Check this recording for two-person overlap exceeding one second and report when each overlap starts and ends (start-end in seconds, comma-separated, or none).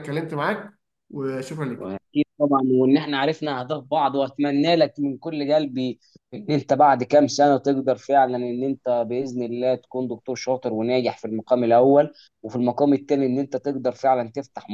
none